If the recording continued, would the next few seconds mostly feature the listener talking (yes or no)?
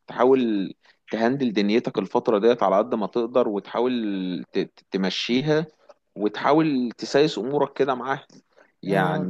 yes